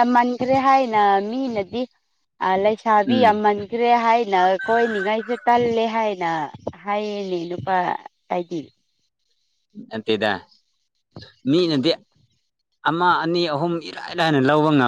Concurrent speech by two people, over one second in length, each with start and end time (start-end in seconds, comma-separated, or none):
none